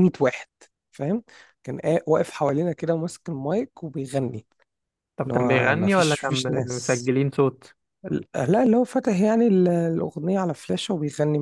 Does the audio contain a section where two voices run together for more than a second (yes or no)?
yes